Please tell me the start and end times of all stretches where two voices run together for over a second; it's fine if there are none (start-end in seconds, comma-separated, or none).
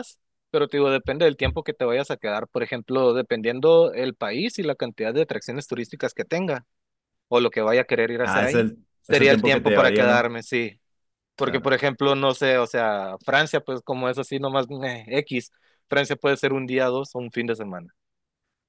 8.2-10.3